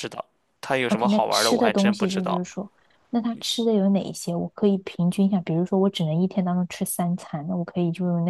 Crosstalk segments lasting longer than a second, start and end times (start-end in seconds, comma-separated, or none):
0.9-2.4